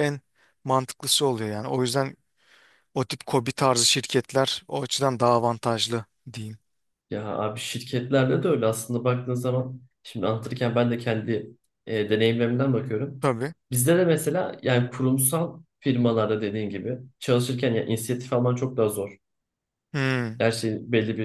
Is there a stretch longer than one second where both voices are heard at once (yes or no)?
no